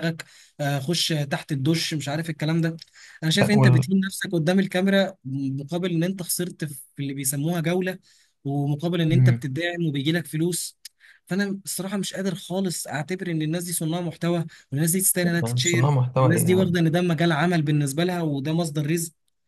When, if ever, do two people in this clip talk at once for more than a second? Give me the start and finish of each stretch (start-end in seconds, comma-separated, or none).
15.2-16.8